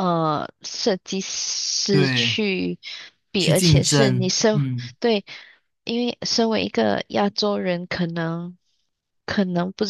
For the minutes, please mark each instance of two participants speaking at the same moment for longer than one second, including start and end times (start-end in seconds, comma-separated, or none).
3.4-4.6